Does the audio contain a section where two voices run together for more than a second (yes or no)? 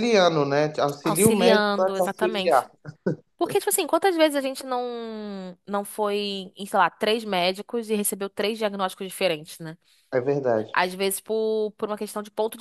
yes